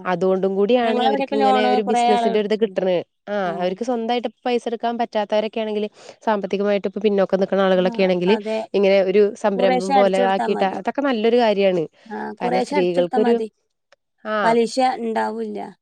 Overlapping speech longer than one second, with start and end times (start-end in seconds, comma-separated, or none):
0.9-2.8